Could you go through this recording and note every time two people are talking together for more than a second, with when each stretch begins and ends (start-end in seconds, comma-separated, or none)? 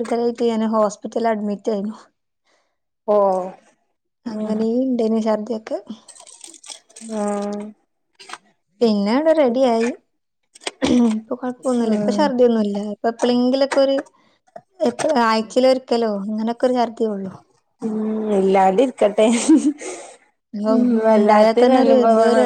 none